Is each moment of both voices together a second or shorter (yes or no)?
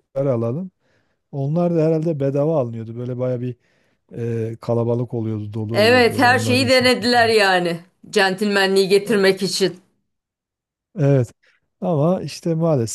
no